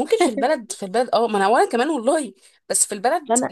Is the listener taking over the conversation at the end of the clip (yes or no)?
yes